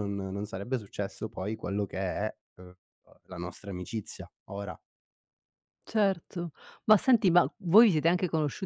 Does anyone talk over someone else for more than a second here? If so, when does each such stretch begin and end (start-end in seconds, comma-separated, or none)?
none